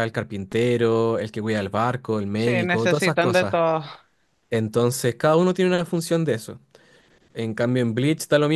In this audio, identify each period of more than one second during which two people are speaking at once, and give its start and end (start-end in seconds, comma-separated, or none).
2.4-3.6